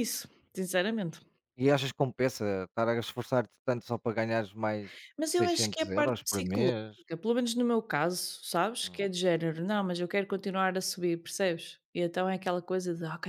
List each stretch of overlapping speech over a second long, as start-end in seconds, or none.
5.2-6.7